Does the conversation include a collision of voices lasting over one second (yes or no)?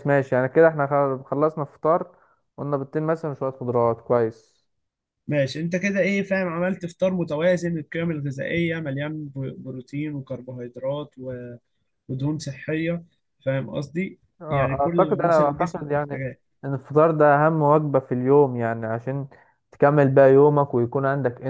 yes